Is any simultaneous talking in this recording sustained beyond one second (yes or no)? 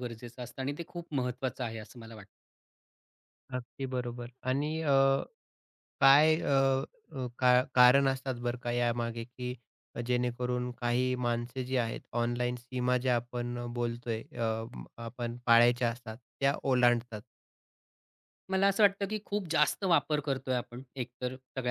no